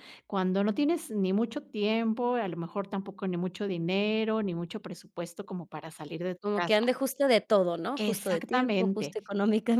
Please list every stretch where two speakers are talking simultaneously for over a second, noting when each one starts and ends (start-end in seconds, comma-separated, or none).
8.0-9.2